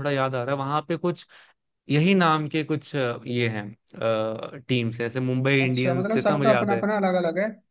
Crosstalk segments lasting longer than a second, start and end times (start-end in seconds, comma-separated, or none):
5.6-6.8